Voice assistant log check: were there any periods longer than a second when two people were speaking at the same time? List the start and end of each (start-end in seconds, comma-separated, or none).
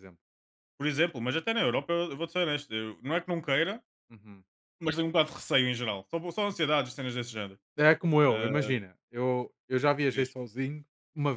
none